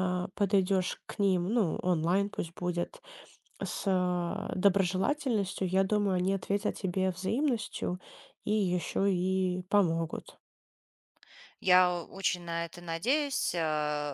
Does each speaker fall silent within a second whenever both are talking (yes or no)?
yes